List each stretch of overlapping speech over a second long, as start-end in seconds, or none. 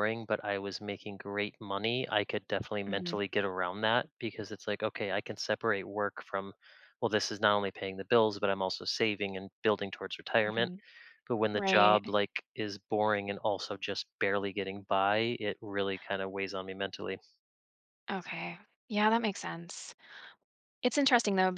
none